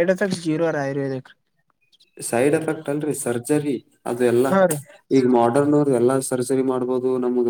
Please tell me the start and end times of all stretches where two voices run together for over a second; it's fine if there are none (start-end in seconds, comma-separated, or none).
none